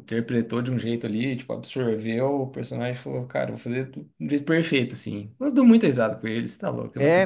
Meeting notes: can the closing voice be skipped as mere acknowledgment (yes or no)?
no